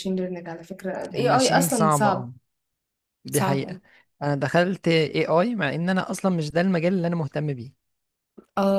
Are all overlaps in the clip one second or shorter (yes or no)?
no